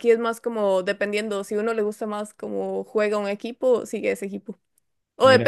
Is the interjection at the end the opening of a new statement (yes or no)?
no